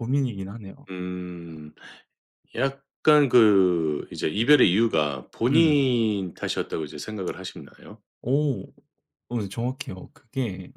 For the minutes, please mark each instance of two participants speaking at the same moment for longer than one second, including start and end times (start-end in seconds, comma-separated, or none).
none